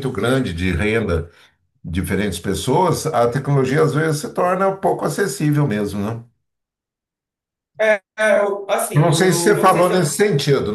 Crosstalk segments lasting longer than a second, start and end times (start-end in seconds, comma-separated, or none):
8.9-10.2